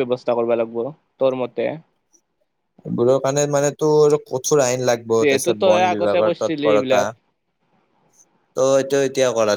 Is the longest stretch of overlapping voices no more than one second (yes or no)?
no